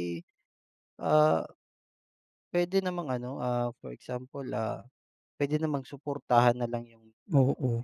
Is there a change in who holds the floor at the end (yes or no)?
no